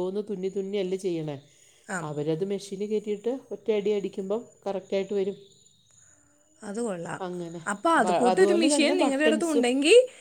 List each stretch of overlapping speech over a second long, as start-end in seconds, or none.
8.0-9.7